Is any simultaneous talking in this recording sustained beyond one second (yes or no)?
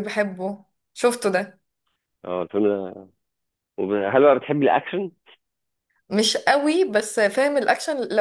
no